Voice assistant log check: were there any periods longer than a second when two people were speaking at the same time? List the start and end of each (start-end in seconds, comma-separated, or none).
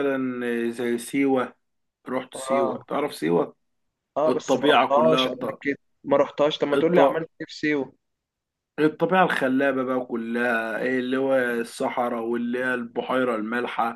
4.3-5.6